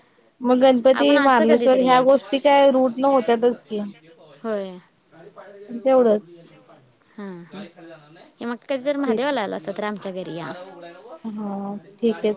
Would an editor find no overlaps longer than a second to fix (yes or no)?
no